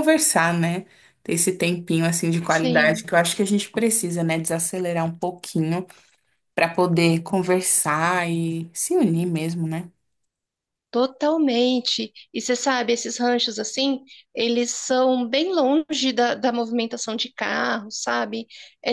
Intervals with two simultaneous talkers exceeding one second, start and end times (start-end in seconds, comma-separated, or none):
none